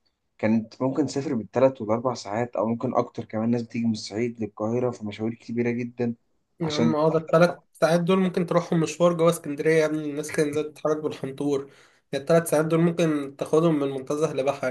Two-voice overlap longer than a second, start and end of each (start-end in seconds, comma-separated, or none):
none